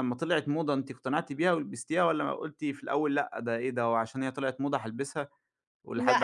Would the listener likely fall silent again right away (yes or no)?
no